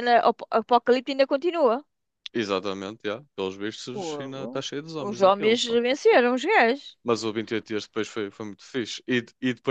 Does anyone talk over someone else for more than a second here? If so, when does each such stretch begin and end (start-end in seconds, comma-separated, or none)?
3.9-5.8